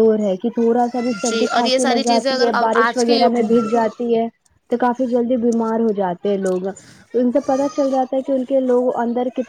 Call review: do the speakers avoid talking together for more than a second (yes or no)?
no